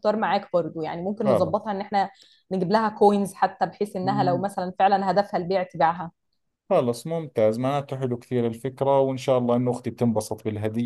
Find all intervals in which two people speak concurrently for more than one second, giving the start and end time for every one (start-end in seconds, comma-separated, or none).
none